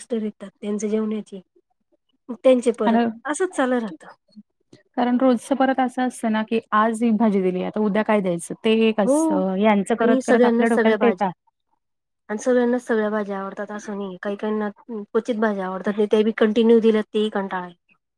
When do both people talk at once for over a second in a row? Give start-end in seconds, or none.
10.0-11.3